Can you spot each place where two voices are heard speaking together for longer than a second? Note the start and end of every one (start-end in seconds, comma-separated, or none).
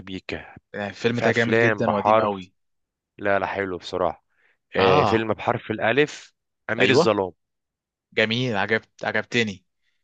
1.1-2.4